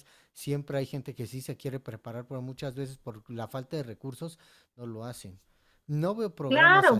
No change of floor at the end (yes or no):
no